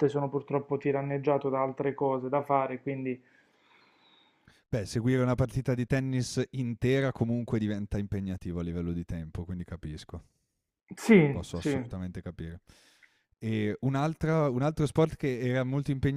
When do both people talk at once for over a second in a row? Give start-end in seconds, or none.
none